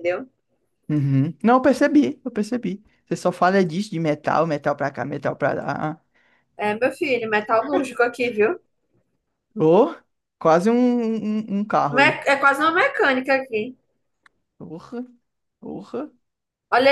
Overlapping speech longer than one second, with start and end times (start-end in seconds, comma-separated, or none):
none